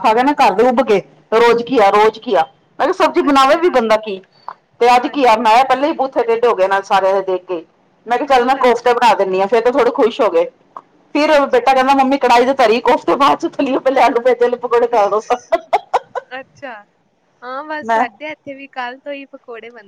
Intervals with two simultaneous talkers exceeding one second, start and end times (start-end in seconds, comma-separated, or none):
none